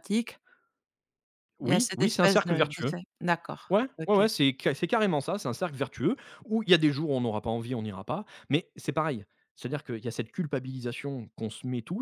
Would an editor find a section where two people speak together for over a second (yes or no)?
yes